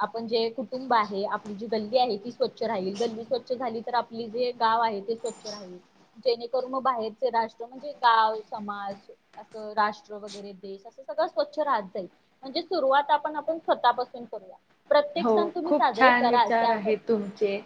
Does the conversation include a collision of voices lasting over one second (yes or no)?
yes